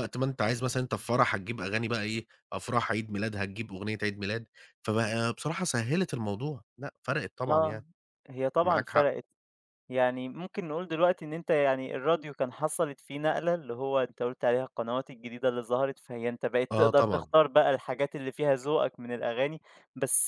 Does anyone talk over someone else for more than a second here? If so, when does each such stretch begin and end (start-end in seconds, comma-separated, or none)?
none